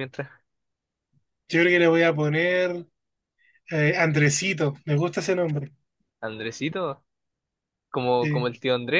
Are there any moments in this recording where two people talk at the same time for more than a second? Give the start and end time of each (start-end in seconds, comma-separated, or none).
none